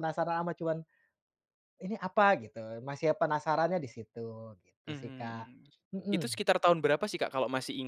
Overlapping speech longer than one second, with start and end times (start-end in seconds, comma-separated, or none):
none